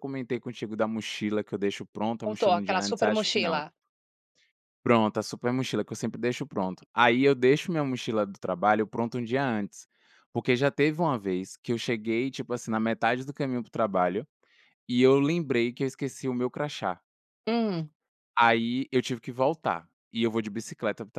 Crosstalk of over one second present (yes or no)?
yes